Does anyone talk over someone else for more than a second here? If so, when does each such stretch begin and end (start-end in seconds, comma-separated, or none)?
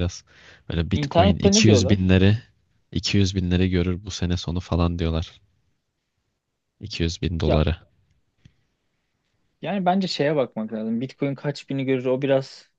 0.9-2.1